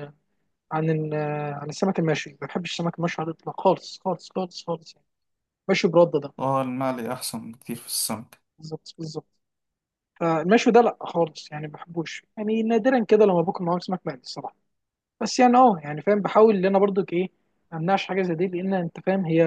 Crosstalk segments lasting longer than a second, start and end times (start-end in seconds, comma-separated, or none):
none